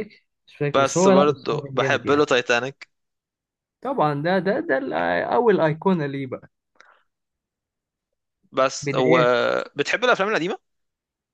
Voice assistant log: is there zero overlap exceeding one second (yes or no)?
no